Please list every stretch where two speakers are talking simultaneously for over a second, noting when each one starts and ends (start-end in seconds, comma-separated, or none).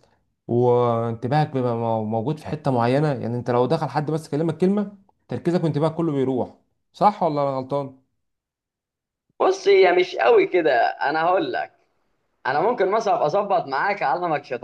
none